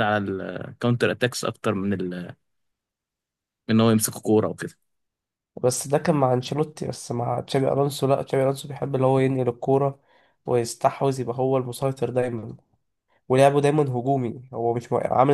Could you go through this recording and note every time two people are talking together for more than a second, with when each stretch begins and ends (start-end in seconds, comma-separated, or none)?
none